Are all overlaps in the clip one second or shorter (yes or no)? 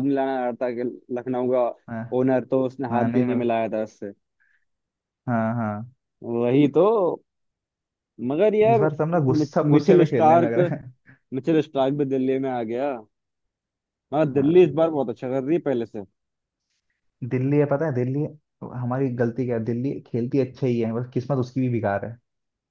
no